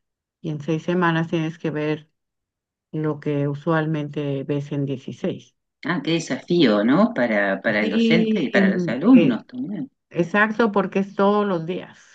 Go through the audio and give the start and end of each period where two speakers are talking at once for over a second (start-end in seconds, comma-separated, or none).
7.8-9.5